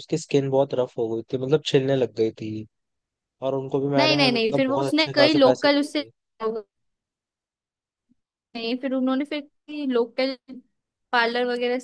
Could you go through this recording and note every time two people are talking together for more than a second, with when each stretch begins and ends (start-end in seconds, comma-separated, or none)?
4.0-6.0